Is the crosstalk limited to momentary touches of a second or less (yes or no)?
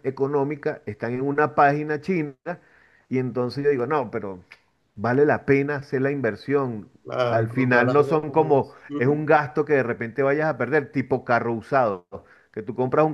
no